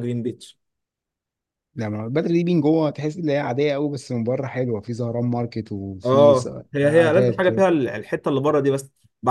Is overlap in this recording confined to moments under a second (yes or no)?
no